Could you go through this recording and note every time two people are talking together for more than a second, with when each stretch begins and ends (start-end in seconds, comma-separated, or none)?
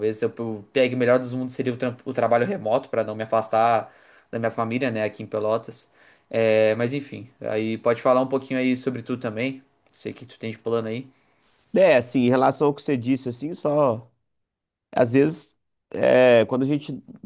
none